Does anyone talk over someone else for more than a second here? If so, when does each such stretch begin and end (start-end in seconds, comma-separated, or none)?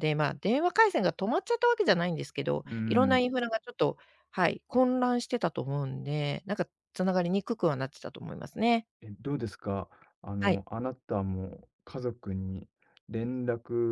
none